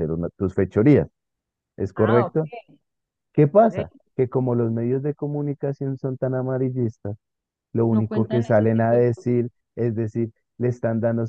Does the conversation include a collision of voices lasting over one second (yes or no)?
yes